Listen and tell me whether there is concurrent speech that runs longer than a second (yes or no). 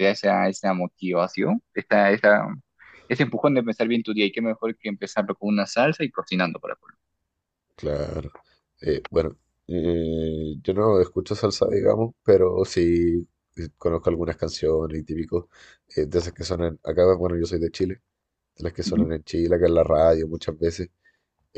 no